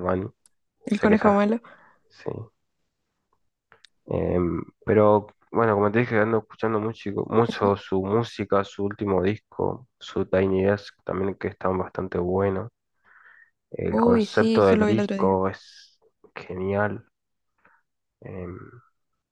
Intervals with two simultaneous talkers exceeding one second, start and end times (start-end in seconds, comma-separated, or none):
13.9-15.4